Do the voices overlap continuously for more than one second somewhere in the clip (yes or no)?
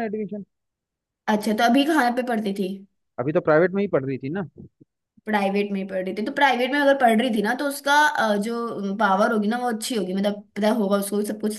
no